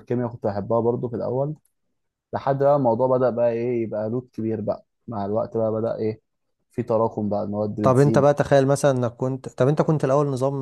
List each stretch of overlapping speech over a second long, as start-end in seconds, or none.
none